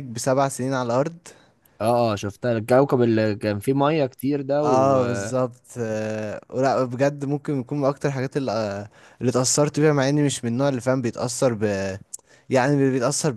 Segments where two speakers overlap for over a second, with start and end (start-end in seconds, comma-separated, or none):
none